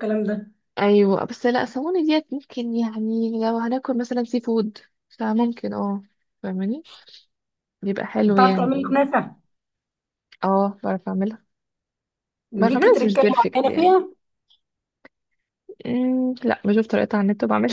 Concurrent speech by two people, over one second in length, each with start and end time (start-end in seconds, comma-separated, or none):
12.6-13.9